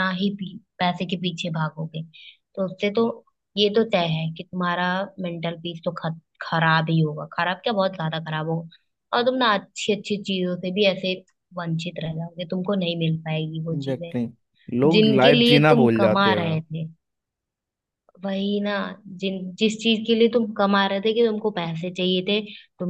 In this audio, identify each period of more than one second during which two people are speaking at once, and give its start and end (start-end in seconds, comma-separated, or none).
14.9-16.6